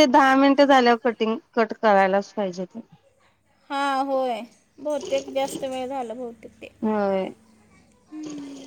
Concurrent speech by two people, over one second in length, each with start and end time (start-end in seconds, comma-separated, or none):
none